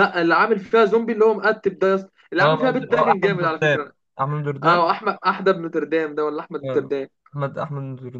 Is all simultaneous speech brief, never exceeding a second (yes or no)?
no